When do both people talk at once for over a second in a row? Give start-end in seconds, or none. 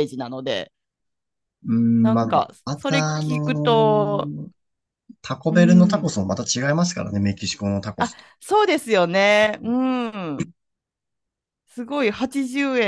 2.0-3.7